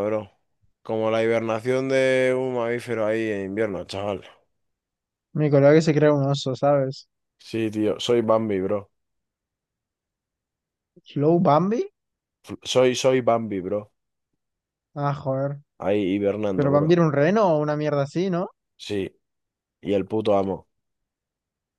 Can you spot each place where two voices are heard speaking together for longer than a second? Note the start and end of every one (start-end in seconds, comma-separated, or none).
none